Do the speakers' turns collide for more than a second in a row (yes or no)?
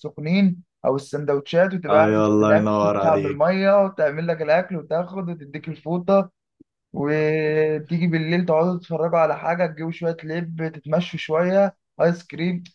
yes